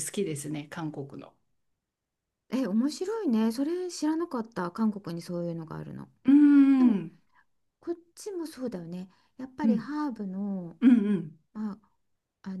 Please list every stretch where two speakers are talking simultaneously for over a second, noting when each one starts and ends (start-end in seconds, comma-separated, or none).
none